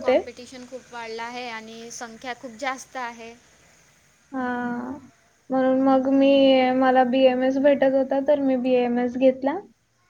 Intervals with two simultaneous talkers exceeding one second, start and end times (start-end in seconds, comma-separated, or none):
none